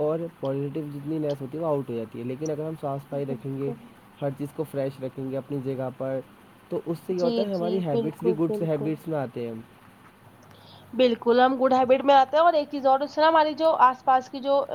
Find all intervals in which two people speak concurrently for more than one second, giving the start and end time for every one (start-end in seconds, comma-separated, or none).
7.2-8.9